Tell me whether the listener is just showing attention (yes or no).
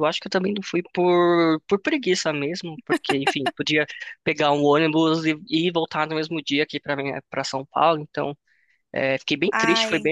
yes